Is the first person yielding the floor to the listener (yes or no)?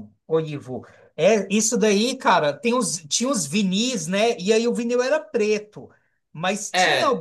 no